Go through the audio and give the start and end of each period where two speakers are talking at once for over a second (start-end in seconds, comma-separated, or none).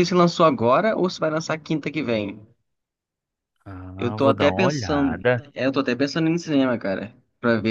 4.0-5.4